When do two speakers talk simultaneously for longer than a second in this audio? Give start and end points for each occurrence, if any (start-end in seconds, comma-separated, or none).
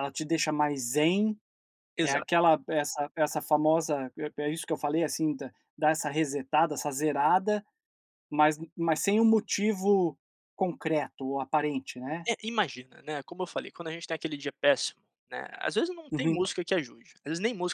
none